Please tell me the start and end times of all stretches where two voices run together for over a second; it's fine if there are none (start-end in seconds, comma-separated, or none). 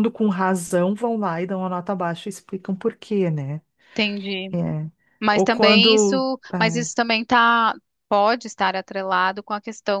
5.3-6.9